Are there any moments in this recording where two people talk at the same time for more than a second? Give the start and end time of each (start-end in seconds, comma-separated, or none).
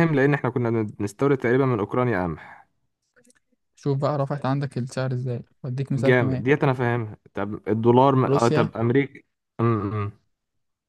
none